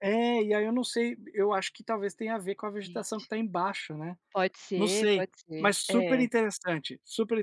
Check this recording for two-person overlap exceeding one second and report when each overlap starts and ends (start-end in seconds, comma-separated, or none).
4.8-6.3